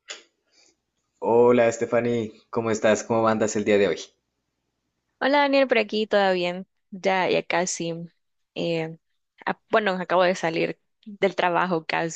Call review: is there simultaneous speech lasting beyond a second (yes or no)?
no